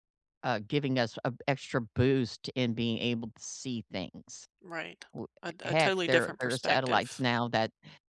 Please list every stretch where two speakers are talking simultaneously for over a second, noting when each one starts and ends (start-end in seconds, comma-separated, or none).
5.6-7.2